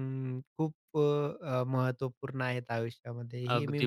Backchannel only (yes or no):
no